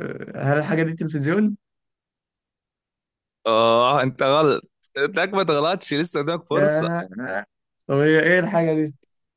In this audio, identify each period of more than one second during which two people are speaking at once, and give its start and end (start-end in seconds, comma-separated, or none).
none